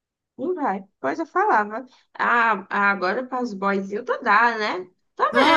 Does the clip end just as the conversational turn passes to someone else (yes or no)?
no